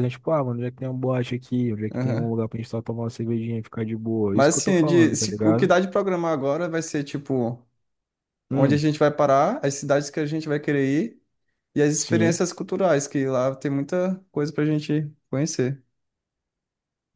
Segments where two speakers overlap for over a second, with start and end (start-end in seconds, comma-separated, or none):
4.3-5.7